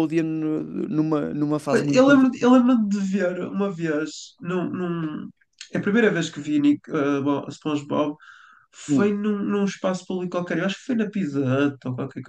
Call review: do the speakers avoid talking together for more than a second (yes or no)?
yes